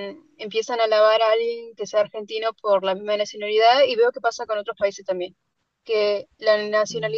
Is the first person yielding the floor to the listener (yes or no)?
no